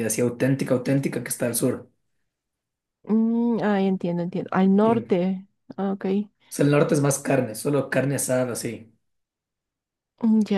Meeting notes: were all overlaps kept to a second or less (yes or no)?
yes